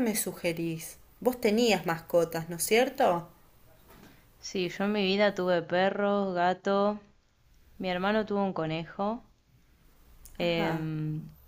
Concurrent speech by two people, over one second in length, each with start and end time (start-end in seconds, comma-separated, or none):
none